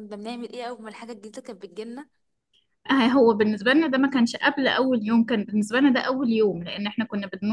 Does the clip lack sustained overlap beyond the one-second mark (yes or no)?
yes